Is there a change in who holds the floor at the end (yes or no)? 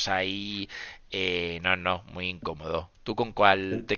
yes